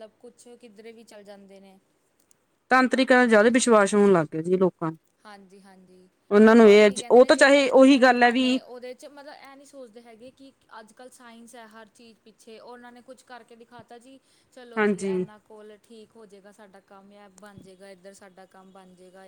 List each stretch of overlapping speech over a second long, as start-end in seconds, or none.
6.8-8.4